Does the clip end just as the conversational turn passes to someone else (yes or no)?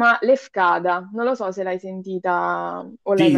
yes